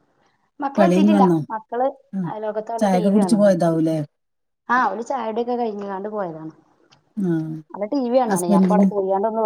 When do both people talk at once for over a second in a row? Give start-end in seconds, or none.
none